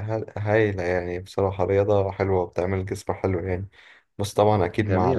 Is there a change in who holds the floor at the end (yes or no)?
no